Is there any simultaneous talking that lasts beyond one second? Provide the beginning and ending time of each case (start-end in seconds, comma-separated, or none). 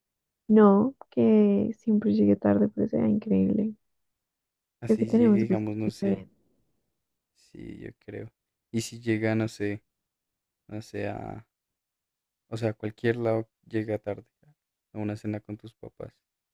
4.8-6.2